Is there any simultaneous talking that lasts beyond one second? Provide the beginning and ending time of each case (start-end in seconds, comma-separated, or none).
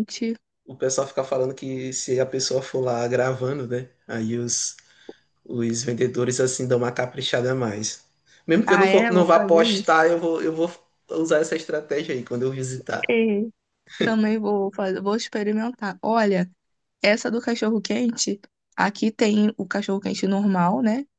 8.7-9.9